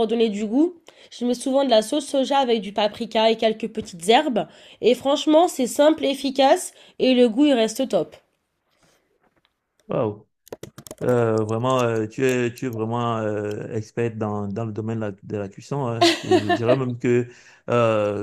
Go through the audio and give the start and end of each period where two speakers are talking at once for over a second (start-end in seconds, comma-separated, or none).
none